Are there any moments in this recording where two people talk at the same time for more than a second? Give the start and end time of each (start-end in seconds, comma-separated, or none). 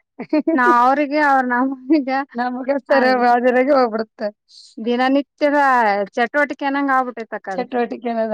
none